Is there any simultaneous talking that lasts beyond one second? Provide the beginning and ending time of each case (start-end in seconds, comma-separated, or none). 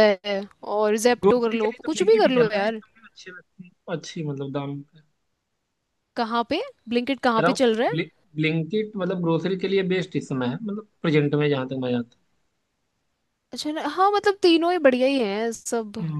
1.2-2.8